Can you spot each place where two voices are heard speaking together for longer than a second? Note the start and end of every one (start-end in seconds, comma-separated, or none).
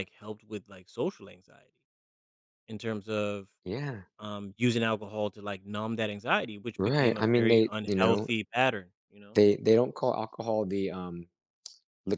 6.8-8.3